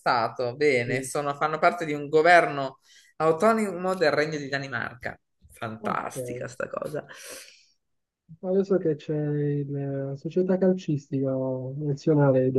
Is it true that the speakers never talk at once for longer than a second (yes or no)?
yes